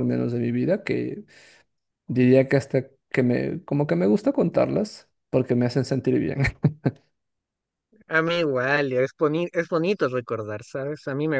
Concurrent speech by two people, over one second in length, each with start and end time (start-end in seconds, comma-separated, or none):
none